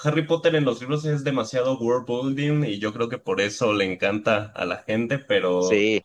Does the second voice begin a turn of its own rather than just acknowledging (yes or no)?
no